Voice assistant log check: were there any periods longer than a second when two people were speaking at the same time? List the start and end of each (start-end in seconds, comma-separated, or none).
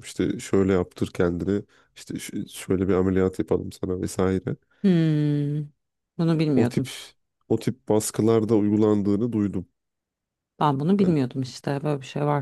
none